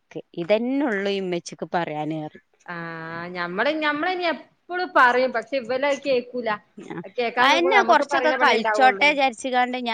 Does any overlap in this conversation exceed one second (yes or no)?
yes